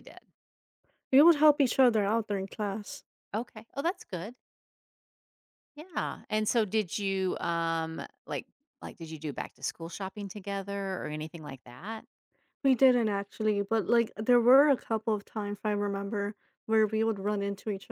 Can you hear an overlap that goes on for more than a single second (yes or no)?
no